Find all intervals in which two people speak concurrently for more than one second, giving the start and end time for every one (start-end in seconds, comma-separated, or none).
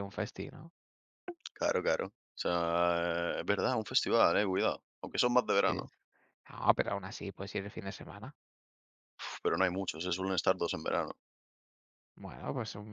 none